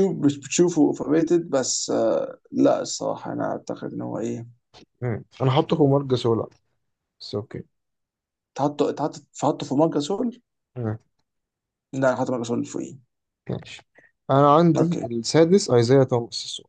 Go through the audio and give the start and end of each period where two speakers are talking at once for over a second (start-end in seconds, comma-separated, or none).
none